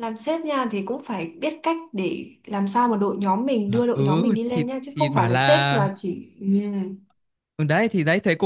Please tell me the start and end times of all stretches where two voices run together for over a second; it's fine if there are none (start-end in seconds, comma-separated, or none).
3.7-5.9